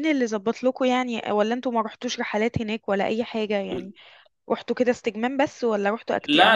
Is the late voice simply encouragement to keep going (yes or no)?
no